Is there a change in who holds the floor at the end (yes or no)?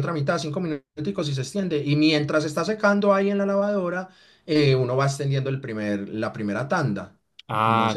yes